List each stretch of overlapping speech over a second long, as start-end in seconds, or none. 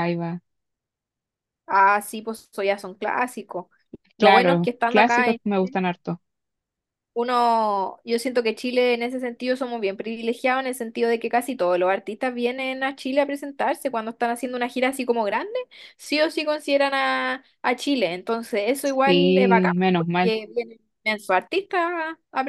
4.2-5.4, 19.1-20.4